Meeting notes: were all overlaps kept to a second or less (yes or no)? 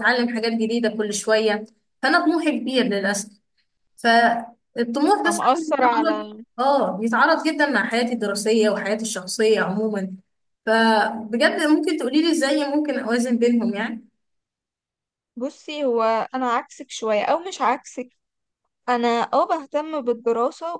no